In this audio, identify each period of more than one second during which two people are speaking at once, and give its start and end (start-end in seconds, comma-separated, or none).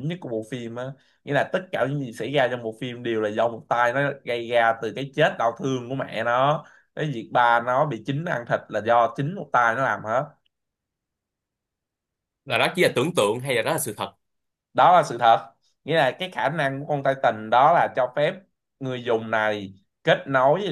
none